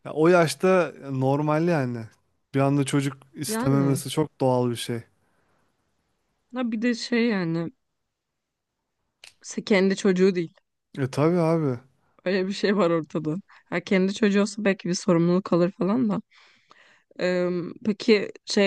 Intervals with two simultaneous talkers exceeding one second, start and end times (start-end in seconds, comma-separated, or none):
none